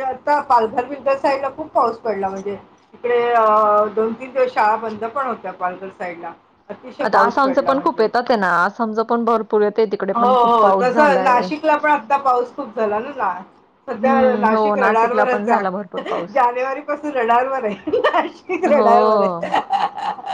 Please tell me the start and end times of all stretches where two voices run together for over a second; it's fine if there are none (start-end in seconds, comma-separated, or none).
10.1-11.5, 14.0-15.6